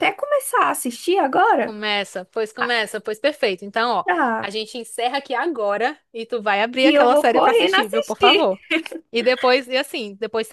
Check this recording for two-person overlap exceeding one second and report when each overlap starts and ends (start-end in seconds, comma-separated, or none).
6.8-8.4